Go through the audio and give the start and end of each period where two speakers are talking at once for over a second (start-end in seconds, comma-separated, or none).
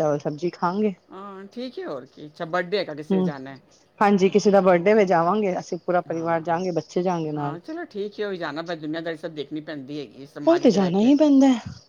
none